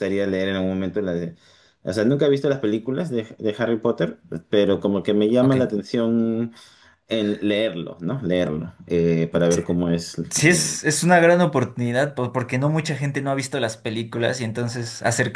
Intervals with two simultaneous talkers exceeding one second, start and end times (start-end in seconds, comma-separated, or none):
none